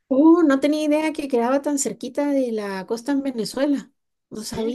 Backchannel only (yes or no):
no